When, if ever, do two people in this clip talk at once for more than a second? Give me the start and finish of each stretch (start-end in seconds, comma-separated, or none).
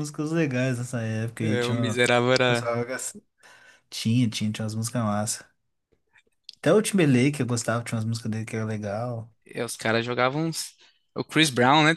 1.4-2.7